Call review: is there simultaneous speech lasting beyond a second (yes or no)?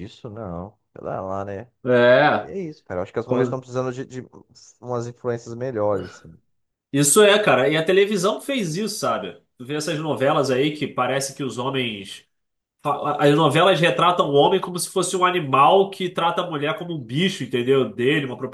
no